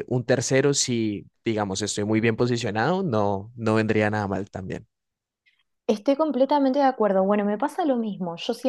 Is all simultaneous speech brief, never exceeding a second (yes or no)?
yes